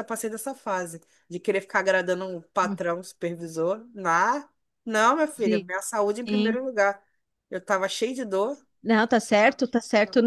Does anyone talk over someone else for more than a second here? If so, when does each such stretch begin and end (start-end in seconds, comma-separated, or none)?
none